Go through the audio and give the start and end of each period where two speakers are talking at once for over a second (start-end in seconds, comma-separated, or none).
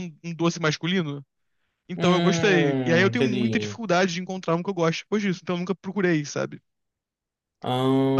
1.9-3.7